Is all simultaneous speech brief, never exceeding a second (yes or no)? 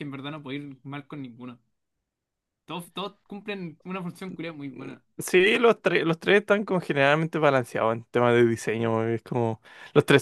yes